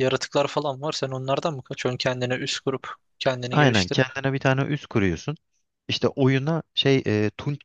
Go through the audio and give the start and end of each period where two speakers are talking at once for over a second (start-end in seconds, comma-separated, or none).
none